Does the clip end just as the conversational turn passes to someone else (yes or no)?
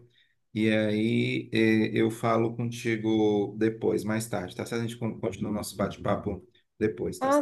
yes